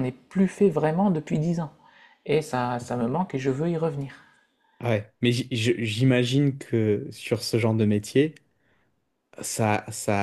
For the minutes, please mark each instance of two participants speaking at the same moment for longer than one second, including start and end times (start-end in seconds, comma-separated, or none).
none